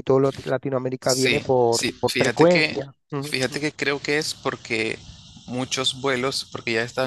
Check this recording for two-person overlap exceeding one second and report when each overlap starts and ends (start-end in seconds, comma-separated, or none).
1.0-2.8